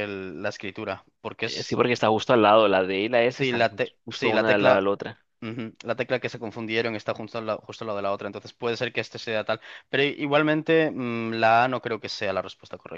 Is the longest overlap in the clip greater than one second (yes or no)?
yes